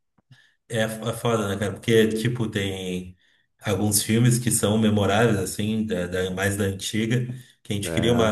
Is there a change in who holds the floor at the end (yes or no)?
no